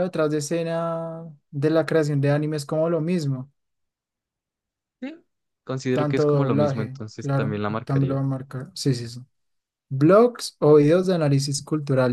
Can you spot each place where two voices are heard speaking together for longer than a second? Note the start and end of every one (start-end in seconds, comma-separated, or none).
5.9-8.2